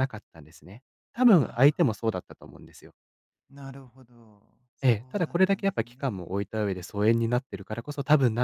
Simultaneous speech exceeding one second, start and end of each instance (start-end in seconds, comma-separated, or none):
4.8-6.3